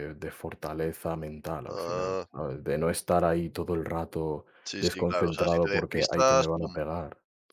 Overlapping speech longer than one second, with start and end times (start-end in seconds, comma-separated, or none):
4.7-6.8